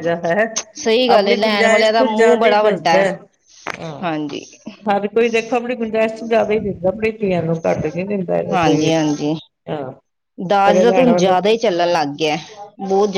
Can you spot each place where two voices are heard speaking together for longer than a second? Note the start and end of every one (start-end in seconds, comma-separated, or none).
1.1-3.0